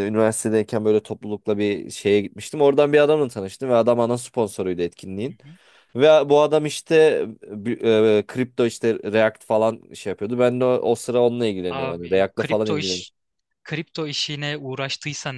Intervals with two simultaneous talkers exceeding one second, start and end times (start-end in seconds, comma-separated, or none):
11.7-13.1